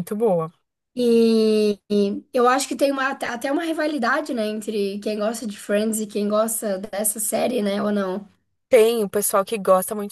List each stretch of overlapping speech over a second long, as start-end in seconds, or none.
none